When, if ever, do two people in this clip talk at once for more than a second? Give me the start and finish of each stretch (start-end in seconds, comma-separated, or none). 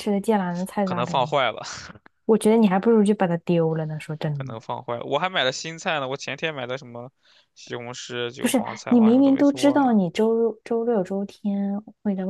8.4-9.9